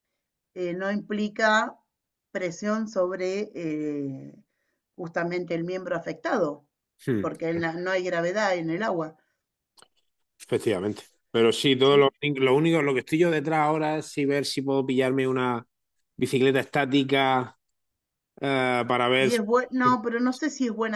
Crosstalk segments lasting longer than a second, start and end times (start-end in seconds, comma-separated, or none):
none